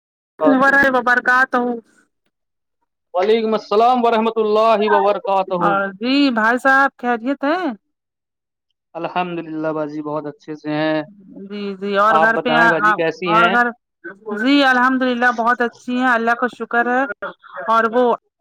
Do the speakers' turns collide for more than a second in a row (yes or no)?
no